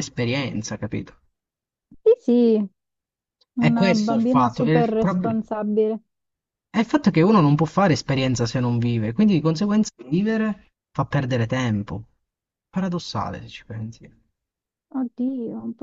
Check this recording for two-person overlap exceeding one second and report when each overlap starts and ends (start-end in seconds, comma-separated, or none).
3.6-5.4